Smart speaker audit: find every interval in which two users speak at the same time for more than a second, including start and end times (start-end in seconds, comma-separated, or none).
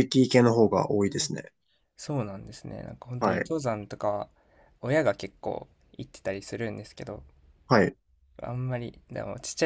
none